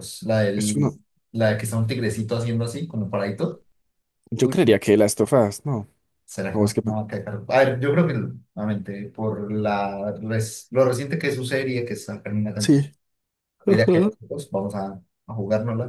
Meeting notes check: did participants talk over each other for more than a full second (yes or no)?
no